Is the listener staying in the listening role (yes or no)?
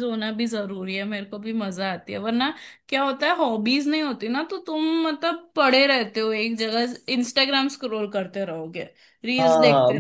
no